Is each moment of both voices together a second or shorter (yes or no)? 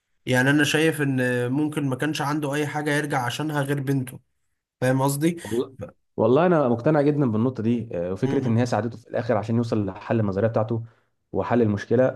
yes